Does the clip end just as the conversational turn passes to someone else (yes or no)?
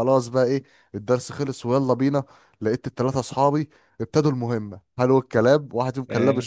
no